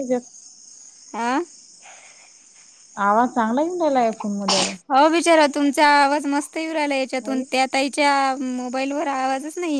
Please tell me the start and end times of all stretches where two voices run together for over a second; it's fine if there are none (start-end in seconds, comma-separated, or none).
none